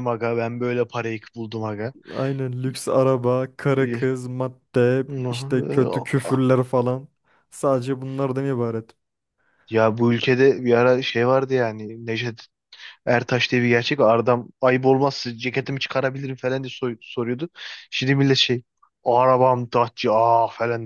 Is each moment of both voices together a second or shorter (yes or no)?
yes